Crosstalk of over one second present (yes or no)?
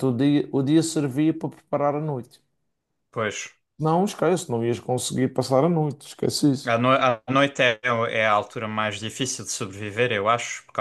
no